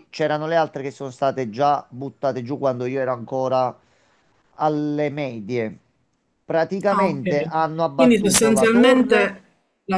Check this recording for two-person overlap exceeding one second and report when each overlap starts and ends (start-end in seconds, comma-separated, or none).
7.9-9.4